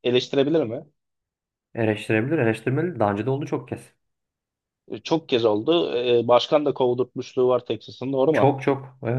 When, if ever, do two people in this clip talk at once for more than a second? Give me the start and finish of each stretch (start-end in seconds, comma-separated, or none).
none